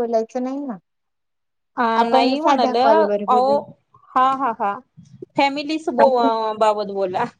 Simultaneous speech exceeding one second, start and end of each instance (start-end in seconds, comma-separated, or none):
2.0-3.5